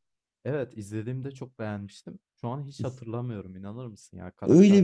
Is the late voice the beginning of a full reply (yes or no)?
yes